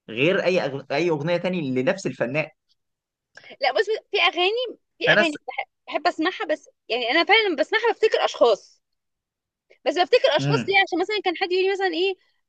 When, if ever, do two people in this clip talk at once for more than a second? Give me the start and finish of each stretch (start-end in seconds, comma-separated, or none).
none